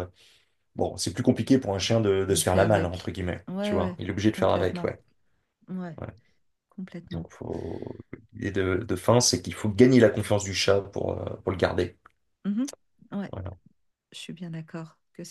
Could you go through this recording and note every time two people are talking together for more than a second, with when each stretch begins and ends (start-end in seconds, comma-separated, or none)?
2.3-4.9